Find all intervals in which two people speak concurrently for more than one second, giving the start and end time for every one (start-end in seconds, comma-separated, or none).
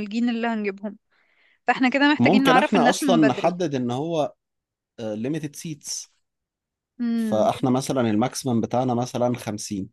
2.2-3.5